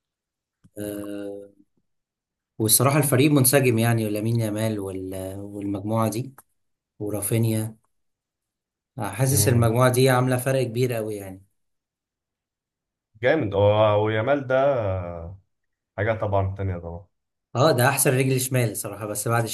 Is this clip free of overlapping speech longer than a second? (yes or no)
yes